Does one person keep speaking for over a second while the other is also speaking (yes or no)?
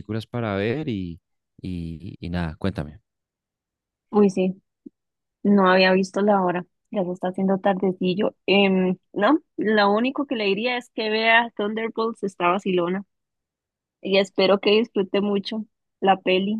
no